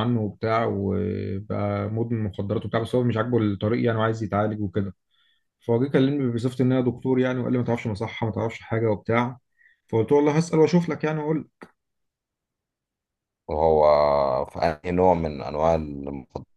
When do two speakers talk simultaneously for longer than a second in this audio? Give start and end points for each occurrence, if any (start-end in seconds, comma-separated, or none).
none